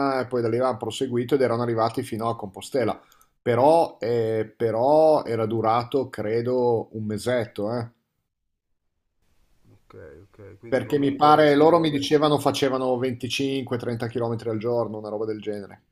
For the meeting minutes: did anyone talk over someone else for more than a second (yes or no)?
yes